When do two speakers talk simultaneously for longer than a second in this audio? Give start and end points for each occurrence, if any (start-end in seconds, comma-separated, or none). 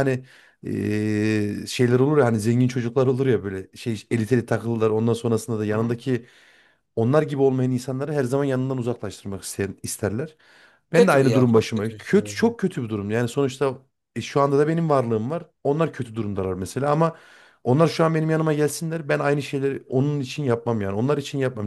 10.9-12.5